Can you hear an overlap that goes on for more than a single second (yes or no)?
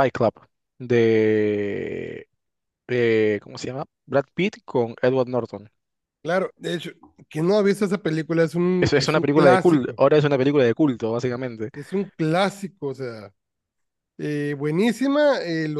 yes